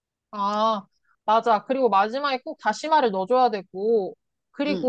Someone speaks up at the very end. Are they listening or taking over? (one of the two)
taking over